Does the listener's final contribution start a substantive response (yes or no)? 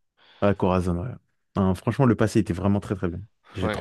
yes